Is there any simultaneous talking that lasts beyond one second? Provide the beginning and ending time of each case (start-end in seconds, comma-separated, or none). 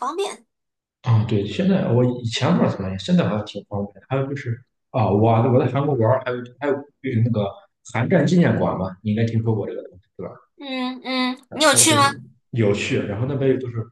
none